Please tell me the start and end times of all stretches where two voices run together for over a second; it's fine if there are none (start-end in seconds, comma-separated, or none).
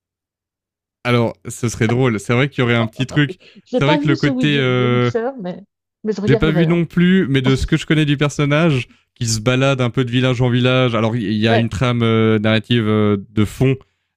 3.7-5.1